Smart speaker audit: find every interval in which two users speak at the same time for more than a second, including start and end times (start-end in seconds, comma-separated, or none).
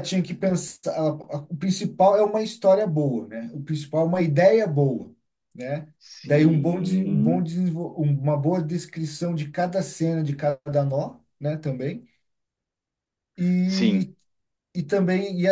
6.1-7.5